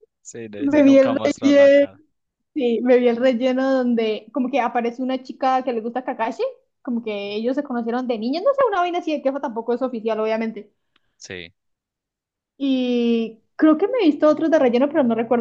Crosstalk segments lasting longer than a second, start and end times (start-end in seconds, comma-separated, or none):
0.6-1.9